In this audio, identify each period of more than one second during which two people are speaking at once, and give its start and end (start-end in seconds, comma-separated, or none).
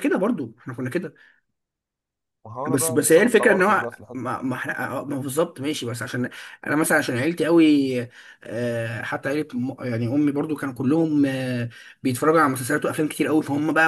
2.7-4.3